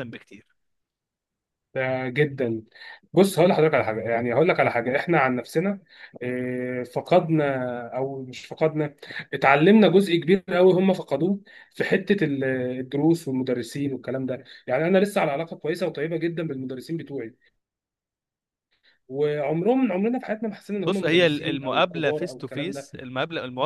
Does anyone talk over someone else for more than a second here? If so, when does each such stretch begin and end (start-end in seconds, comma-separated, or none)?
20.9-22.7